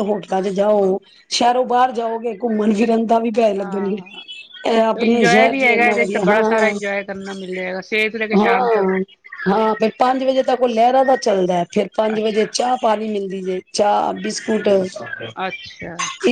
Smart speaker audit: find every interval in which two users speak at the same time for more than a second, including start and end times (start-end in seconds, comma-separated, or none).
5.0-6.7